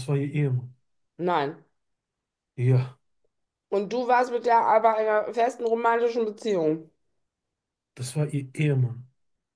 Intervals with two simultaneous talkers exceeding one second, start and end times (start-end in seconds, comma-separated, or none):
none